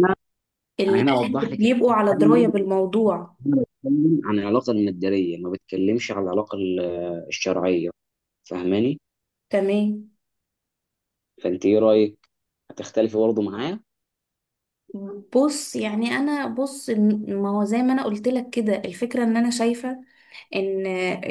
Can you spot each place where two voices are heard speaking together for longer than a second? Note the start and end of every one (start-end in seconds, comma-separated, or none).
0.9-2.4